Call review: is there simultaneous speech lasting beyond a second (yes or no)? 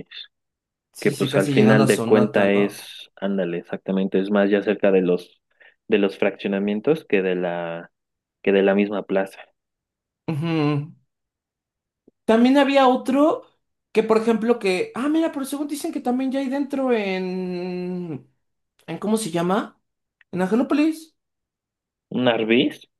yes